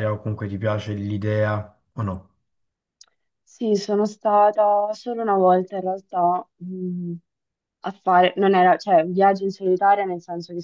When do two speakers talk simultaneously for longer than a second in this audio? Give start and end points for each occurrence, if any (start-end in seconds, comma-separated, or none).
none